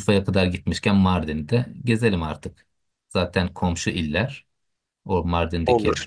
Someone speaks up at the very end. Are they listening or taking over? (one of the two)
listening